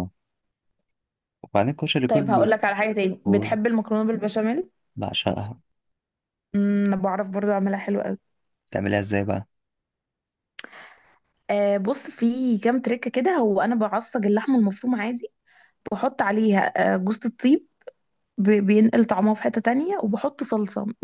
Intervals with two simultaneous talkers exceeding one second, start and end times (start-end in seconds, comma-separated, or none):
none